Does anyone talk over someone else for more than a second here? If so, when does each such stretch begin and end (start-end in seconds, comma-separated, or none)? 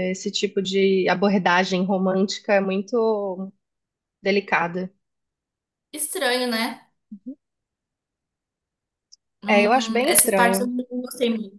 9.5-10.7